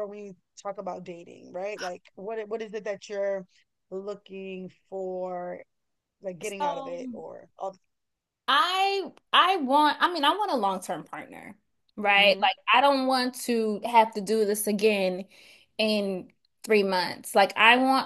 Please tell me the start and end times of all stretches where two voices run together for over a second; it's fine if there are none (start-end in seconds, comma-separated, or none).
none